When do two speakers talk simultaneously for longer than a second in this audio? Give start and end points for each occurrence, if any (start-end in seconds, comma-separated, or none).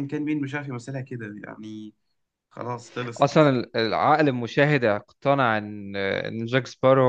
none